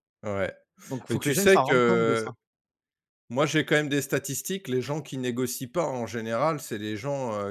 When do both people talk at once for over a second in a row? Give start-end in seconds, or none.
1.1-2.3